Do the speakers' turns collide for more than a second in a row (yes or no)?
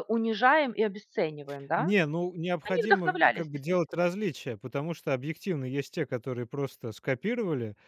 yes